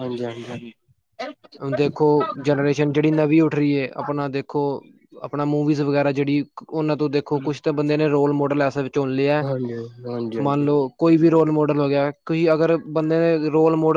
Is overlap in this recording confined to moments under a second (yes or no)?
yes